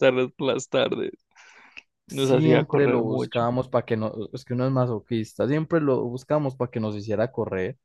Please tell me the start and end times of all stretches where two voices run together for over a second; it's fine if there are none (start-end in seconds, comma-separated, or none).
2.1-3.4